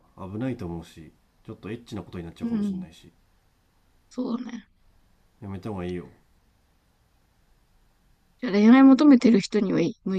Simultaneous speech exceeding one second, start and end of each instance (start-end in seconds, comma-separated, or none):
none